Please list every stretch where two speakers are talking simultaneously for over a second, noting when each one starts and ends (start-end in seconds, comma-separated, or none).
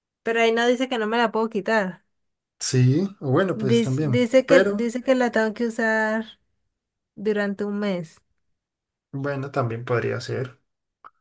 3.5-4.9